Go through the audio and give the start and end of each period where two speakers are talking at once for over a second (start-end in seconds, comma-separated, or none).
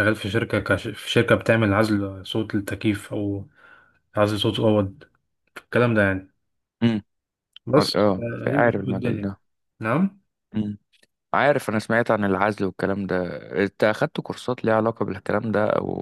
7.8-9.3